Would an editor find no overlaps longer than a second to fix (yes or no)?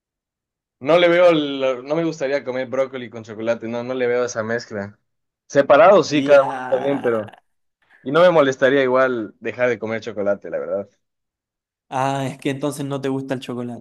no